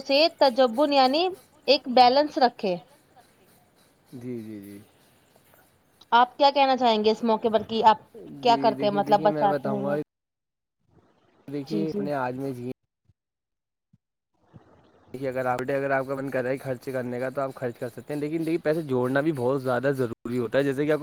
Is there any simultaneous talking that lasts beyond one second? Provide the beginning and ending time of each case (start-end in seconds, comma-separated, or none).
8.4-9.9